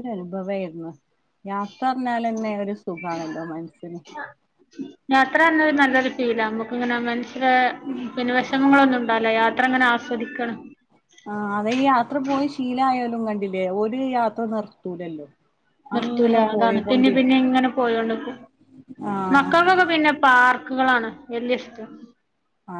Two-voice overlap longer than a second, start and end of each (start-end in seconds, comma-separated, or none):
16.0-17.4